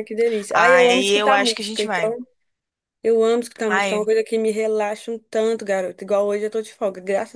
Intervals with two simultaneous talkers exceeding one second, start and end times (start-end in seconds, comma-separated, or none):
0.5-2.2